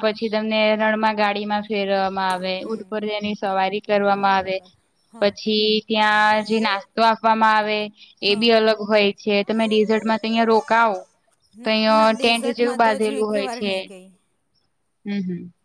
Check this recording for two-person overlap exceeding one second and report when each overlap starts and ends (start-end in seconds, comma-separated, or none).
11.6-13.7